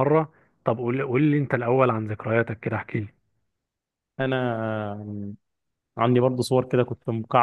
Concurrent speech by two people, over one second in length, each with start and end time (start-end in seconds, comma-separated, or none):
none